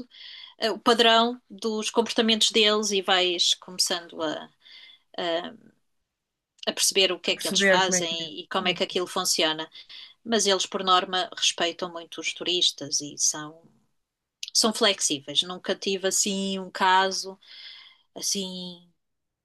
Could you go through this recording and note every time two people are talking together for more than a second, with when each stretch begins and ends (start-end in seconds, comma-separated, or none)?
7.3-8.8